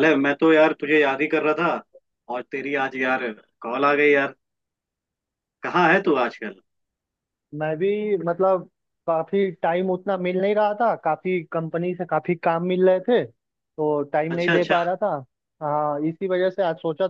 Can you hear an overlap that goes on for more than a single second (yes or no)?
no